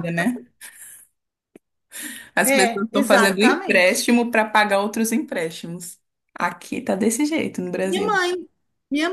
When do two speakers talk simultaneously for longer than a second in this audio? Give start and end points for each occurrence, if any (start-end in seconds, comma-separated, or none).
2.4-4.0